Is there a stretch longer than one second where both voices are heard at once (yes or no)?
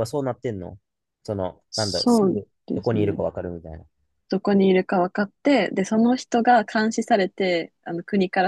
yes